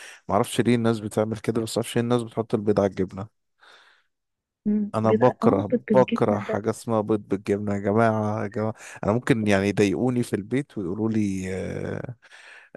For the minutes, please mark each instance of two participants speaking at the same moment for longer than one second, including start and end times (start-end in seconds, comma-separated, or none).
4.9-6.7